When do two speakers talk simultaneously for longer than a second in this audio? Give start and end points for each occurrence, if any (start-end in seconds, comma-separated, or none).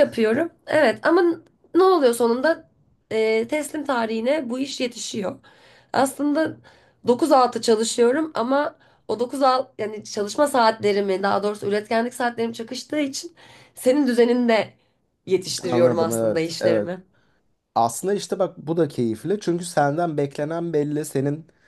15.6-16.9